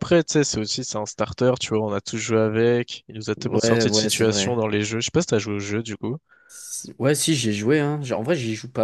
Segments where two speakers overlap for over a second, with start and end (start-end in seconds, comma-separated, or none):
3.4-4.6